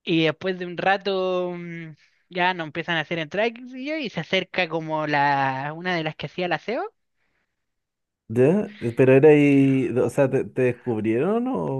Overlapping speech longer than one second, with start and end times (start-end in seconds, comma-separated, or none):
none